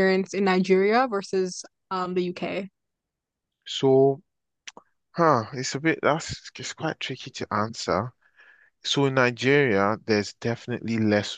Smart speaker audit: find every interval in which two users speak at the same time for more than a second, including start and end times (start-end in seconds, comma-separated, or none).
none